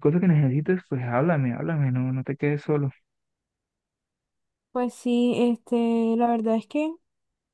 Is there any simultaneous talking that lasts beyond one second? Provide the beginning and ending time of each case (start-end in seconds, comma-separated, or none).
none